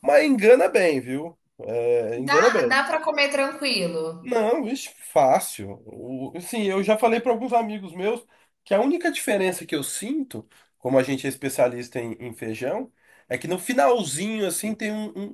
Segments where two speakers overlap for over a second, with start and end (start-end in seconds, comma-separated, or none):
none